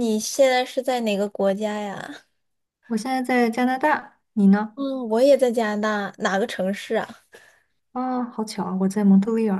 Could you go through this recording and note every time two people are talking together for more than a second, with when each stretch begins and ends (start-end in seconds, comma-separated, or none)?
none